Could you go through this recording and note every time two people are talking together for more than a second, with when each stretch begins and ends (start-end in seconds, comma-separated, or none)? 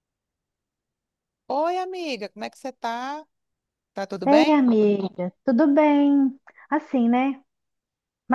none